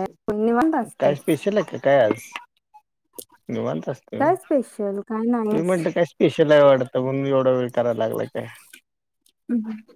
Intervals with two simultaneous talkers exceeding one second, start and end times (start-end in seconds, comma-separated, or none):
4.2-5.7